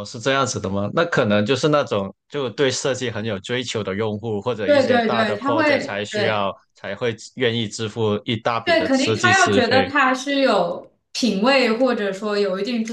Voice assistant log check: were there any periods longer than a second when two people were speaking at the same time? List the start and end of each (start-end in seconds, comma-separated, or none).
4.6-6.5, 8.6-9.9